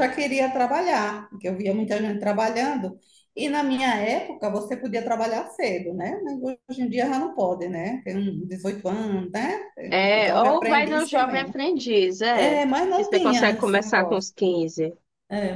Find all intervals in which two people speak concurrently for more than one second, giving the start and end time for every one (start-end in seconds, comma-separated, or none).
10.1-11.5, 12.3-14.3